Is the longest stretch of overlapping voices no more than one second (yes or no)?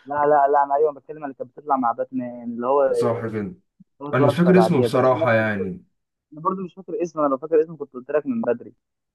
no